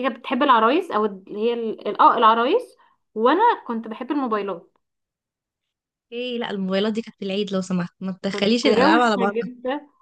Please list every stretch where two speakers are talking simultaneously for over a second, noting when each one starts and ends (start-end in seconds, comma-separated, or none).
8.3-9.5